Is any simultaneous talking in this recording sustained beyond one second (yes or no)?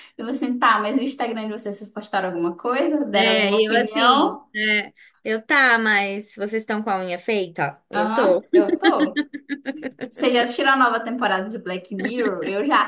yes